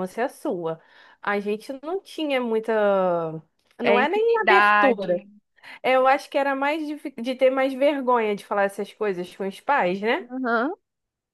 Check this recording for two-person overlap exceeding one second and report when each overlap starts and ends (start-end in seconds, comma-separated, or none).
3.8-5.2